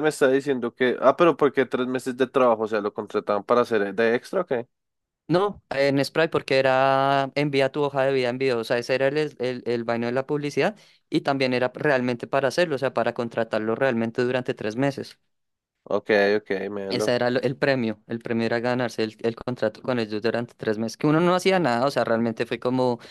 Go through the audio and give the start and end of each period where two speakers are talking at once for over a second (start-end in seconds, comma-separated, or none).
none